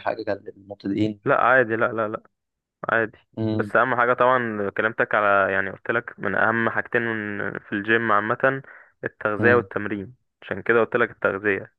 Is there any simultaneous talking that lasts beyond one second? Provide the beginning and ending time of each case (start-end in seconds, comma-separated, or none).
none